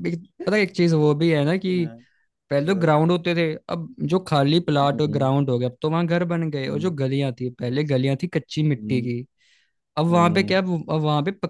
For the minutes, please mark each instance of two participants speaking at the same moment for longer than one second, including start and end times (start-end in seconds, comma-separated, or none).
none